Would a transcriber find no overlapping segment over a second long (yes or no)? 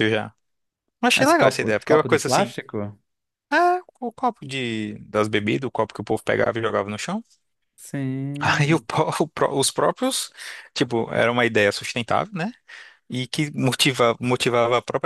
no